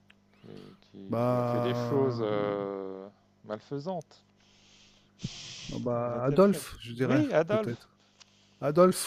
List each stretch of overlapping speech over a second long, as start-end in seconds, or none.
1.1-2.3, 6.0-7.7